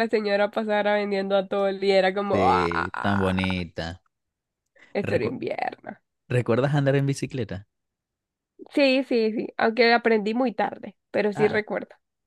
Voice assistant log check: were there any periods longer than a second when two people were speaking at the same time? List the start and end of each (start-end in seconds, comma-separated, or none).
2.3-3.6